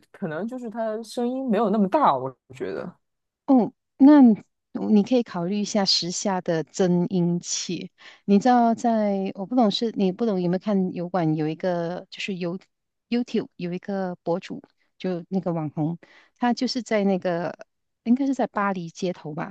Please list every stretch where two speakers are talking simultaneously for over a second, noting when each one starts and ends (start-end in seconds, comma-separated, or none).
none